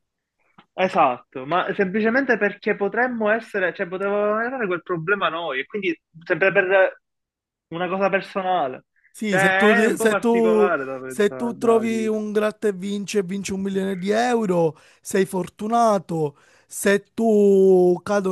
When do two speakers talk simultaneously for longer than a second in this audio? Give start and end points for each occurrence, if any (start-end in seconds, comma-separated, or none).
9.3-12.2